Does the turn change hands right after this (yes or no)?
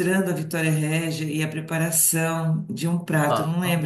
no